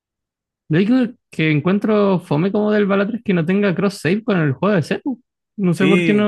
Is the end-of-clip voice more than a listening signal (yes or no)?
yes